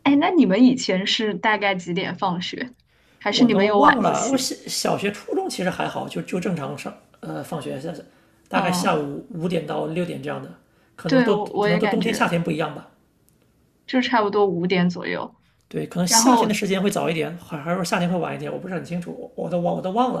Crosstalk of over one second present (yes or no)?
yes